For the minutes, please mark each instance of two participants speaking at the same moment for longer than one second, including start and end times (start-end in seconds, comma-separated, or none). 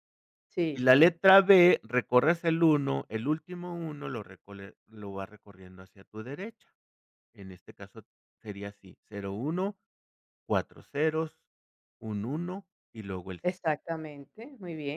none